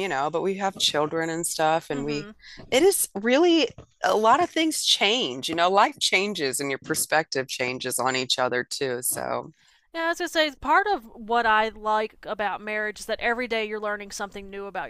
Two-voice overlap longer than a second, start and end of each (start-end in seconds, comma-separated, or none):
none